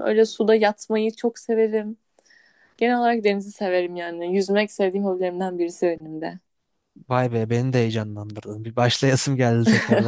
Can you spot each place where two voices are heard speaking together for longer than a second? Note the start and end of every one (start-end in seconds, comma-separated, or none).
none